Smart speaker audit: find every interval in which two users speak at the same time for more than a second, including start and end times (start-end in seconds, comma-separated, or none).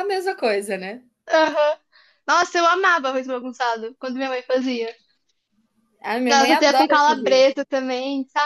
6.3-7.7